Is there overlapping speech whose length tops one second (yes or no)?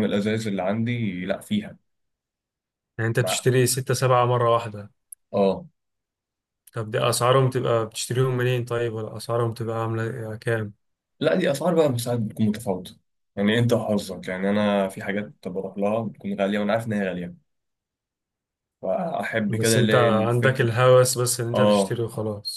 yes